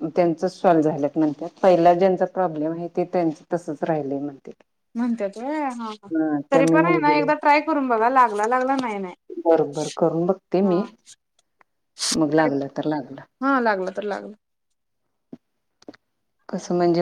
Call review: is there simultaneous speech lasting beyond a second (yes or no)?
no